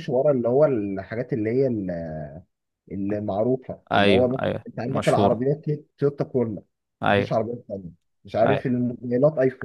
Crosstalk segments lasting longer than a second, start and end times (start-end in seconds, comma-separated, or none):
3.9-5.5